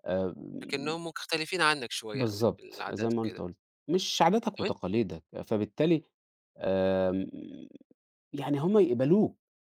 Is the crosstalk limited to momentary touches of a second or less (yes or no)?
no